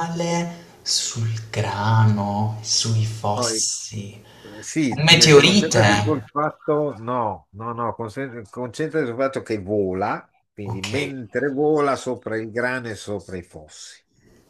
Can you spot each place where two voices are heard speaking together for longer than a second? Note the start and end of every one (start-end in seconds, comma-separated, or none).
4.9-6.2